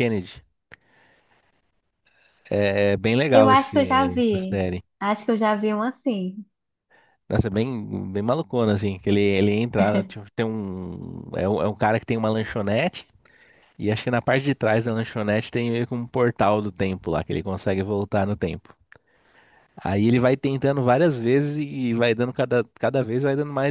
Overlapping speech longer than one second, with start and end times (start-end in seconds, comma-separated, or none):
3.3-4.6